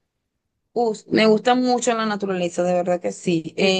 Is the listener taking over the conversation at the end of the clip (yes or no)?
no